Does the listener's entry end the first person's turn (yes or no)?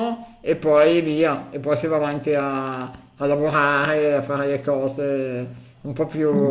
yes